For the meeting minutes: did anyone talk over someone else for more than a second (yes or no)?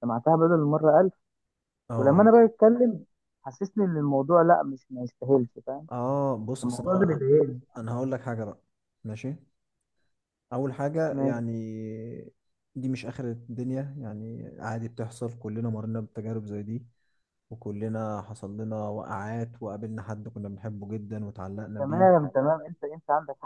no